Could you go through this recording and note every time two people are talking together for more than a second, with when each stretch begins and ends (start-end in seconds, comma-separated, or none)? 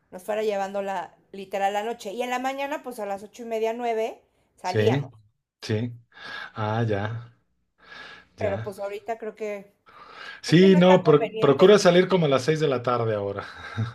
10.4-11.8